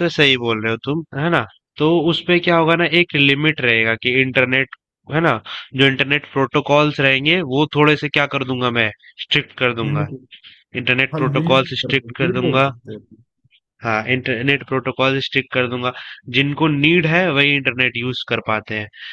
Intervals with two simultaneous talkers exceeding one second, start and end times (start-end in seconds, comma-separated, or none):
11.1-12.7